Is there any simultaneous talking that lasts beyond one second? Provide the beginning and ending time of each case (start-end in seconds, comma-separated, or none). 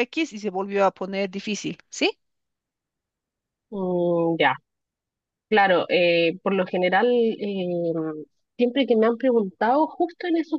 none